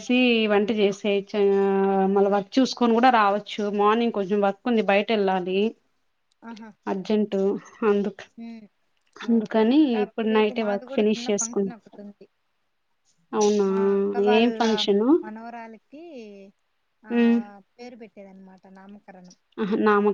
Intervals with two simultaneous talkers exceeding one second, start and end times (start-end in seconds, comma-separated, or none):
9.4-11.7